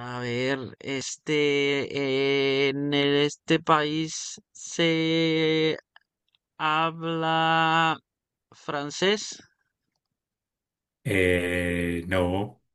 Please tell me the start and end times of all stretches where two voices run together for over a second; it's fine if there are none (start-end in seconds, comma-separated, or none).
none